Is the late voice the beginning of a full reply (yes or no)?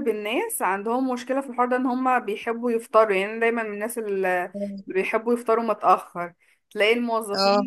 no